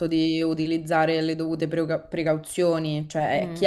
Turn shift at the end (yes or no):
no